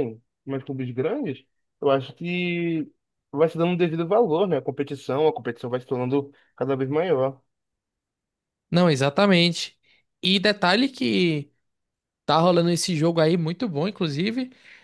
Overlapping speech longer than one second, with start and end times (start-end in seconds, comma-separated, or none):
none